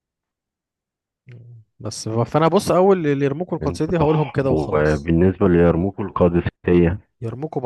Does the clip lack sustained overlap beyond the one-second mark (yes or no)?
no